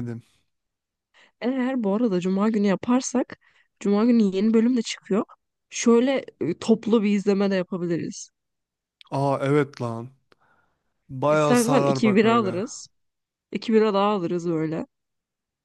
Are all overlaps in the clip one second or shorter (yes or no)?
no